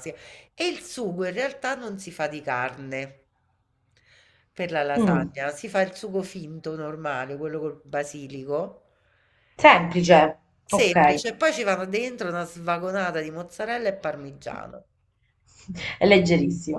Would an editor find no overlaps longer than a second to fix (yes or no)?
yes